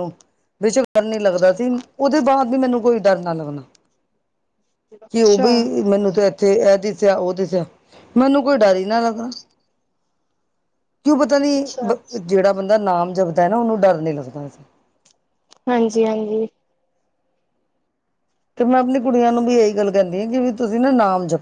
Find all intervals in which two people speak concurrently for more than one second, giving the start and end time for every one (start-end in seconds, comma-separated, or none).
none